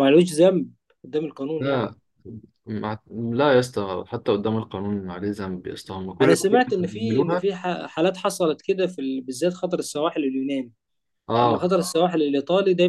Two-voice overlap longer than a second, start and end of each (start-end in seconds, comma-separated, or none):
6.2-7.5